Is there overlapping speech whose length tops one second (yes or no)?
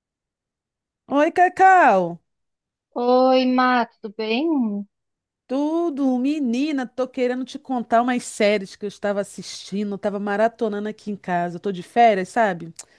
no